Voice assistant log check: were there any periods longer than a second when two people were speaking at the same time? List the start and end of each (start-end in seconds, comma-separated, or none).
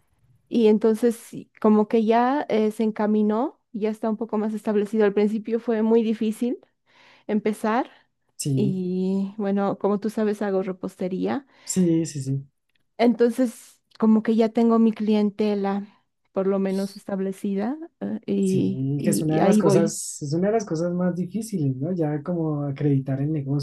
18.4-19.9